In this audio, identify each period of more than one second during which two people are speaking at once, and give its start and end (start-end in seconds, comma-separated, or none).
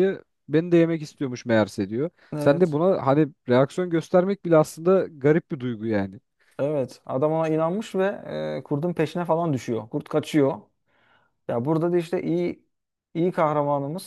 none